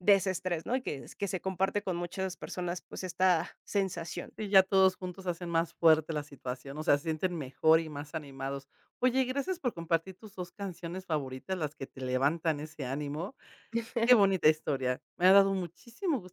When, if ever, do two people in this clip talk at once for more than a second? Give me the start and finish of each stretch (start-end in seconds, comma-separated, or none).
none